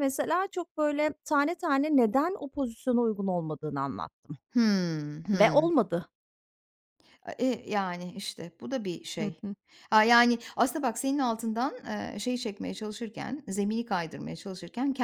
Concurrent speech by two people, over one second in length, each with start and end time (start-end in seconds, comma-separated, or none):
none